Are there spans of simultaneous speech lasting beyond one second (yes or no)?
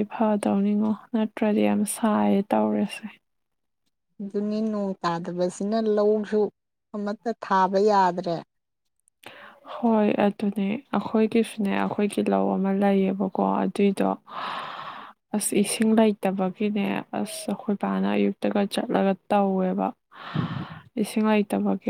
no